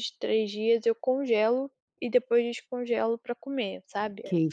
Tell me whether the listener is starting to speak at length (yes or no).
yes